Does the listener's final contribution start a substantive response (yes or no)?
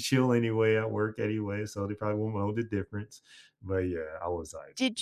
yes